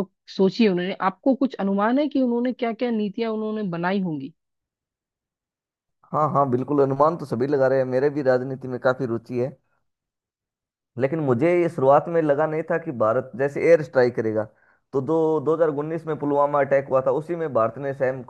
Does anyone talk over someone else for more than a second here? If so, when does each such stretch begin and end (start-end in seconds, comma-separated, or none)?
none